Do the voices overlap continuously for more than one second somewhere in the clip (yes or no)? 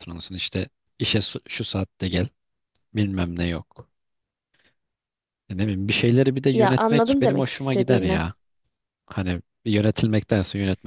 yes